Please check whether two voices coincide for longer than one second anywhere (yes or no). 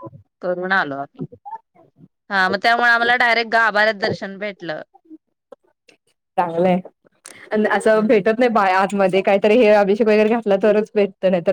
no